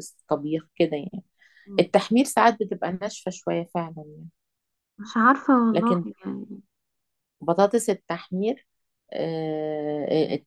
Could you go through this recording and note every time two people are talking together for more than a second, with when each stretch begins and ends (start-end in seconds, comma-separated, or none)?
none